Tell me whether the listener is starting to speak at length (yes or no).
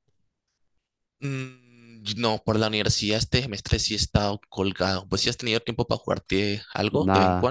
yes